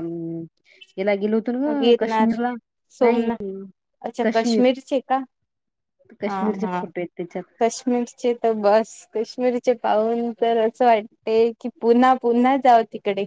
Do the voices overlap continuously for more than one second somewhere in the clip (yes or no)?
no